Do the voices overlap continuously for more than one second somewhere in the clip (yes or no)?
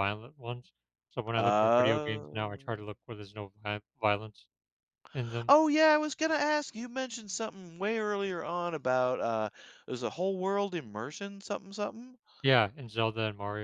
yes